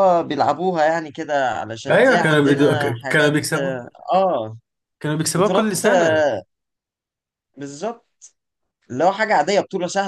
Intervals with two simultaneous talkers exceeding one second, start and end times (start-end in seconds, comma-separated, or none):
1.9-3.3